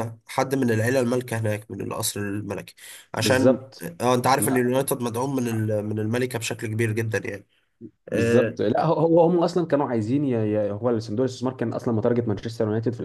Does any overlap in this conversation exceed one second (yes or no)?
no